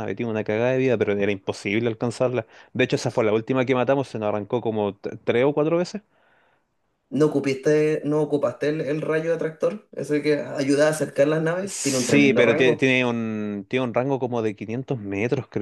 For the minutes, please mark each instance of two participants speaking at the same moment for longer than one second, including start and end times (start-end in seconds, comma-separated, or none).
11.6-12.9